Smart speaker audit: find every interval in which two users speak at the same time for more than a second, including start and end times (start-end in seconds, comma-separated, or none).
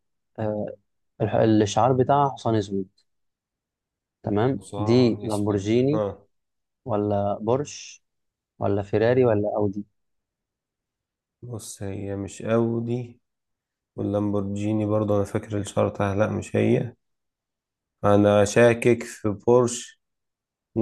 4.6-6.0